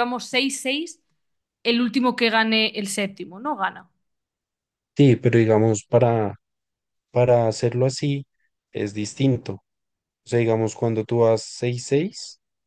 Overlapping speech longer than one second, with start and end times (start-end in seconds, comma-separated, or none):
none